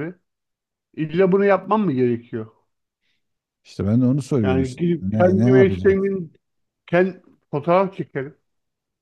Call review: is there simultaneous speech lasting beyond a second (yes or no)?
yes